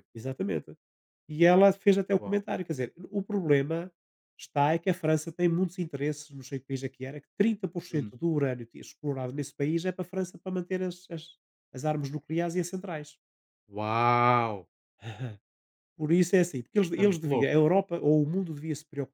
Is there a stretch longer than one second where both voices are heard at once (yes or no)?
no